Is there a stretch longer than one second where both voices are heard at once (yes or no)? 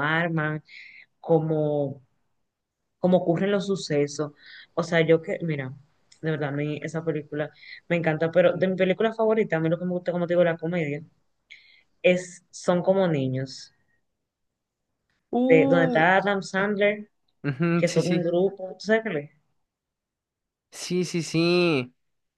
no